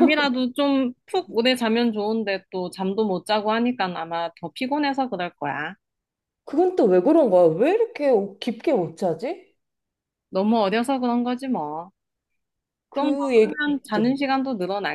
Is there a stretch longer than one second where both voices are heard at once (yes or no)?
yes